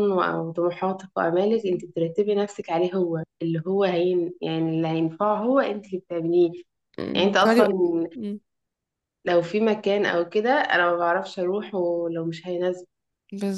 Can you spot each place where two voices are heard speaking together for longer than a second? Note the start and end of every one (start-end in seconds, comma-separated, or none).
none